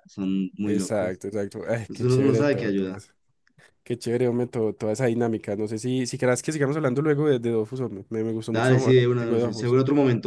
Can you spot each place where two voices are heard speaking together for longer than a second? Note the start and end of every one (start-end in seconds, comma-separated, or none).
1.8-3.0, 8.5-9.8